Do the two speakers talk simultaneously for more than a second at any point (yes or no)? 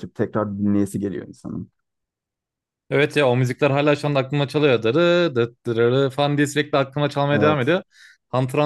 no